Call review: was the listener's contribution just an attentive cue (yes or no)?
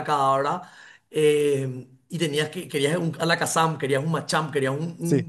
yes